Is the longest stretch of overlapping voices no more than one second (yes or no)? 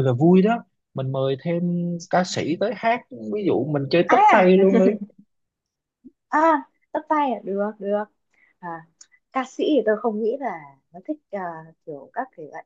yes